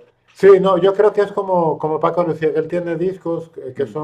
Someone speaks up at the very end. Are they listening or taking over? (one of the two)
listening